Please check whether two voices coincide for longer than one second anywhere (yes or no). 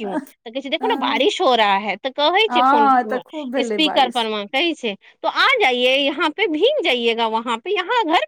yes